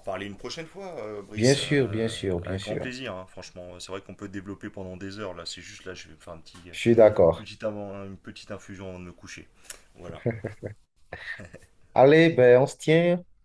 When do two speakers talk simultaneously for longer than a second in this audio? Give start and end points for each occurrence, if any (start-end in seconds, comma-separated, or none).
1.3-2.9